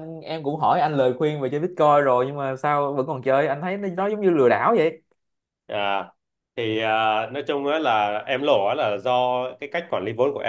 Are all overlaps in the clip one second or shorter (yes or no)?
yes